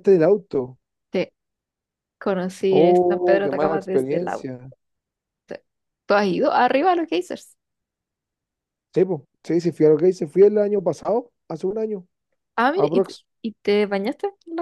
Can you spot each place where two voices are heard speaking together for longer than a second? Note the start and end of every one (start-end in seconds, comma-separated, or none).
2.7-4.5